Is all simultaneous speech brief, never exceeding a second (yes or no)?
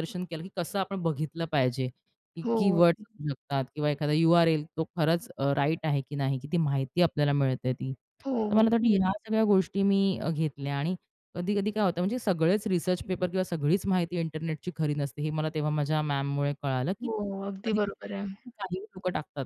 no